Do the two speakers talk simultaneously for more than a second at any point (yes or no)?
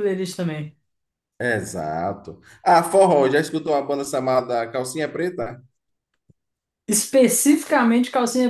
no